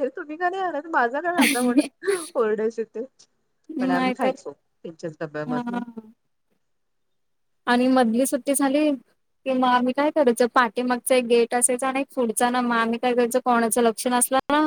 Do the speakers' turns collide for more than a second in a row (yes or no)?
no